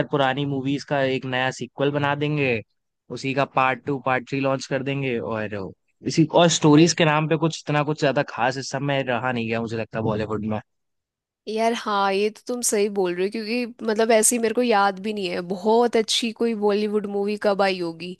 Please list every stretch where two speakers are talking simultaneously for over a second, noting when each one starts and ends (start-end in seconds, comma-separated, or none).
none